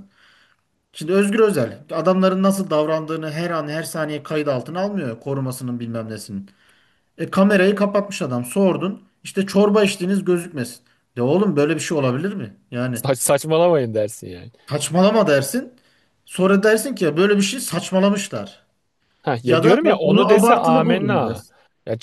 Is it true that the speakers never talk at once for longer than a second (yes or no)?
no